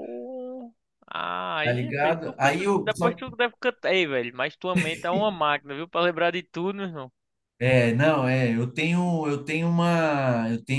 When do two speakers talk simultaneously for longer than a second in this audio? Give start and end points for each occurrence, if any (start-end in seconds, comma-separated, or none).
1.6-3.2